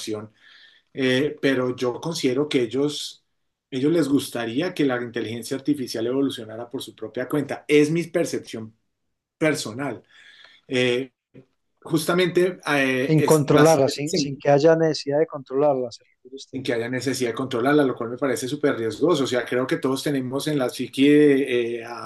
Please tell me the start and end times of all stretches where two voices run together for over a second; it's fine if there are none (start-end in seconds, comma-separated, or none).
13.1-14.4